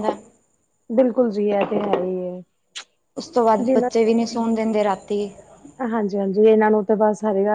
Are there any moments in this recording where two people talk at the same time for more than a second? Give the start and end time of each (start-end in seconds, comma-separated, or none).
none